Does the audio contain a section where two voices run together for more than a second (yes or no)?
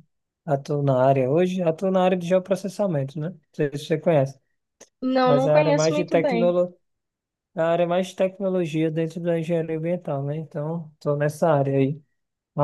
yes